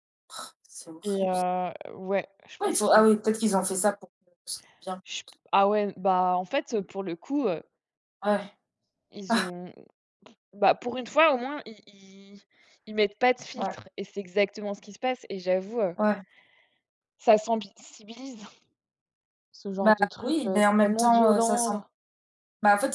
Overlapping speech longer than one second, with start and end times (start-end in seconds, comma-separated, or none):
19.8-21.7